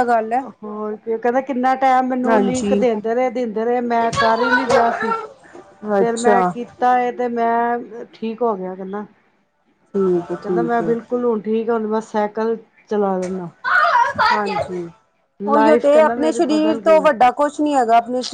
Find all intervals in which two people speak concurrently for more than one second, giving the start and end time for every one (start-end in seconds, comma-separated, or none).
15.5-17.2